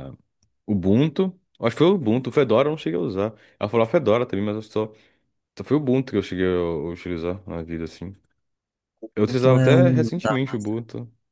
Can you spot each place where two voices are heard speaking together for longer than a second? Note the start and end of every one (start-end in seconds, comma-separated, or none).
9.2-10.7